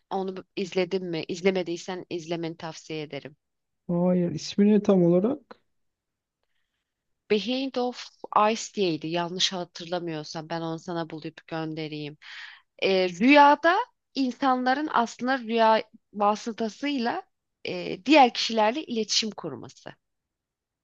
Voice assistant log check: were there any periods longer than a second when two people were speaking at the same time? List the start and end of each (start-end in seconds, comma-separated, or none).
none